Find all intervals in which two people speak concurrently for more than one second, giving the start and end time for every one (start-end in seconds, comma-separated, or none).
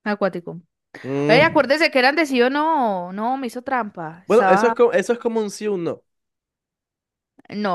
none